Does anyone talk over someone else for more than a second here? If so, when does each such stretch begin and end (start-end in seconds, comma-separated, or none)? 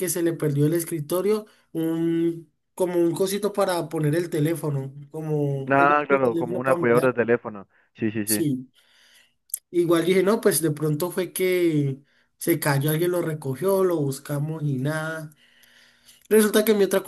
5.7-7.1